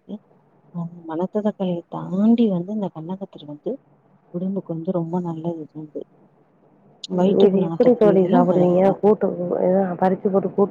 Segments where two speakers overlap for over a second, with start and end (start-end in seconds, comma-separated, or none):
7.4-9.0